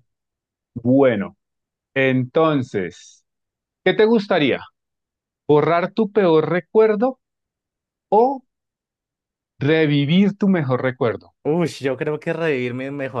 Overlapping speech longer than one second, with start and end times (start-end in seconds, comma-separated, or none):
none